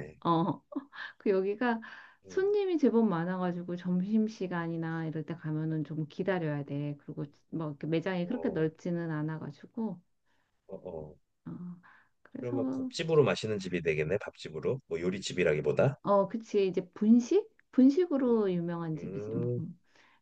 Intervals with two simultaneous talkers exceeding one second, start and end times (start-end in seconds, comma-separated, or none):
none